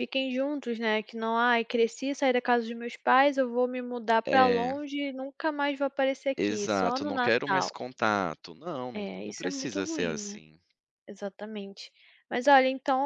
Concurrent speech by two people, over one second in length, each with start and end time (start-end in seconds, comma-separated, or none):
6.4-7.8, 8.9-10.4